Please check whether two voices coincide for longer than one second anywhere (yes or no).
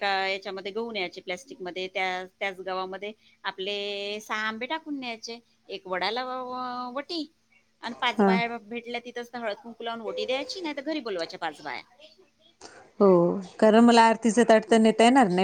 no